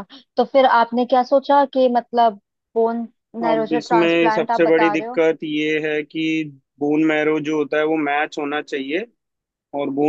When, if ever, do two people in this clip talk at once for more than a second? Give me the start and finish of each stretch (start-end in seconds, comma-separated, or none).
3.5-5.2